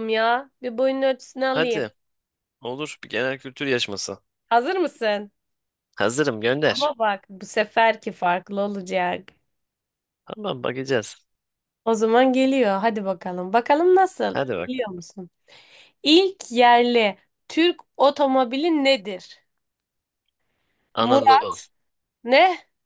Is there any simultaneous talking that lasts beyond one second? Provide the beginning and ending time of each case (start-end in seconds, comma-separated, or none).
none